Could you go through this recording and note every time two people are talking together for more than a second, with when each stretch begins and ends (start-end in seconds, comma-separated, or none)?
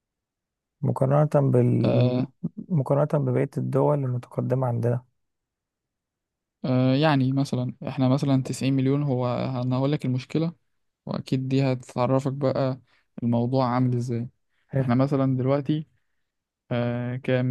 none